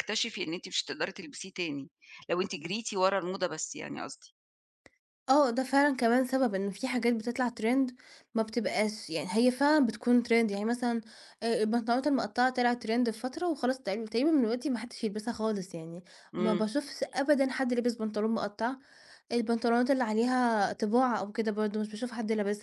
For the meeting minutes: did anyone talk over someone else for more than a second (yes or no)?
no